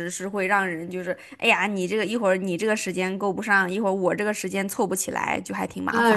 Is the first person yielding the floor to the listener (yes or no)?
yes